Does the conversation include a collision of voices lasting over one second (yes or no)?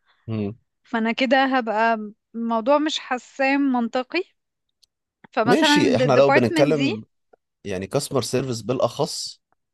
yes